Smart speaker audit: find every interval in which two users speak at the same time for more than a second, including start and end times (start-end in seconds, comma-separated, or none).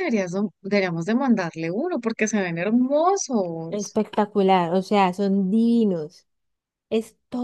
none